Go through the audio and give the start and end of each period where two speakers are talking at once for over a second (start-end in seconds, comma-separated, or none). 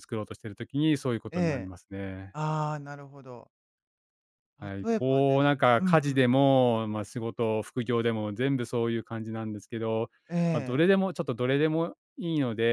4.8-6.3